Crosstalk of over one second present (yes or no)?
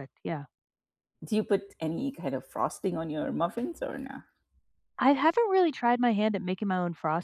no